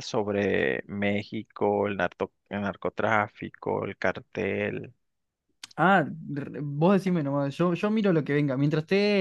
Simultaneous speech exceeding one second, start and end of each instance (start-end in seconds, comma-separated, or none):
none